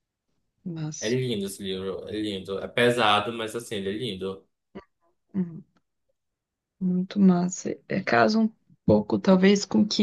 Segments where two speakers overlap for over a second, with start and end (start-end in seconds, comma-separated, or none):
none